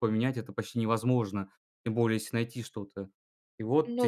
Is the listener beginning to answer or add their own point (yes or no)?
no